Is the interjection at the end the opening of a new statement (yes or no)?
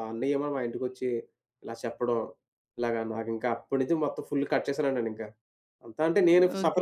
yes